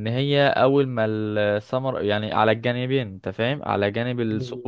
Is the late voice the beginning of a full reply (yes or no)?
no